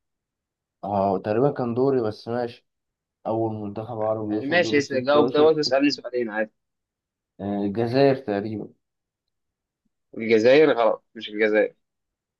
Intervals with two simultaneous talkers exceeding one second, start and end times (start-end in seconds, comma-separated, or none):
4.3-5.6